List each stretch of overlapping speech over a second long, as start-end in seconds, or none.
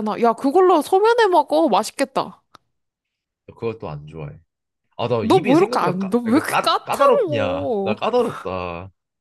5.2-8.0